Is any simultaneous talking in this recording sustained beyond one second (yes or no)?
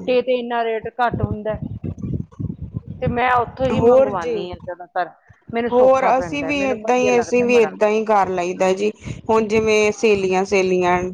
yes